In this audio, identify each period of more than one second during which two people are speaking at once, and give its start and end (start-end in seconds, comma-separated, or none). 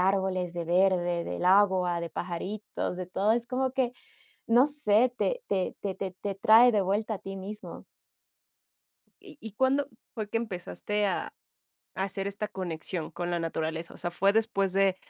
none